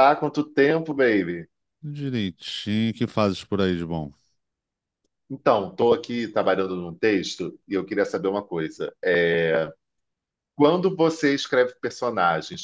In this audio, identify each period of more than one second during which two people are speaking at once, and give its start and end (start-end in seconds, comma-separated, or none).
none